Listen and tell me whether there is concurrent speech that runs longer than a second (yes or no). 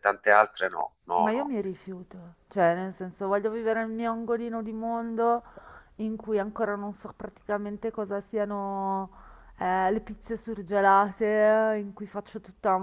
no